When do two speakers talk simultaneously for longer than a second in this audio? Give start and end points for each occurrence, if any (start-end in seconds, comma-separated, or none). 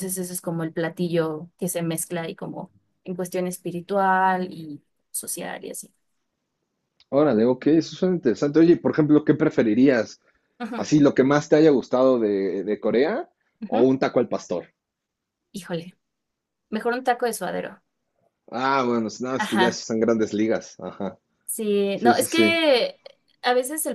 none